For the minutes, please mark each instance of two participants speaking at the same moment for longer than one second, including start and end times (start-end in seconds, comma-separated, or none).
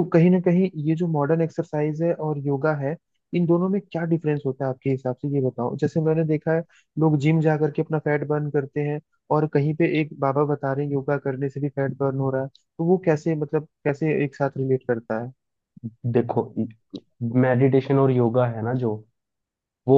none